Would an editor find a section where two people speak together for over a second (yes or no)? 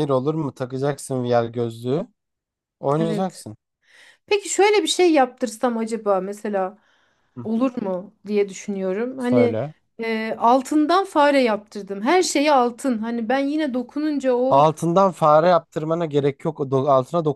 no